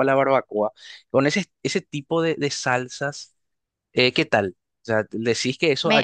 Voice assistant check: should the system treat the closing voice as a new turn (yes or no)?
no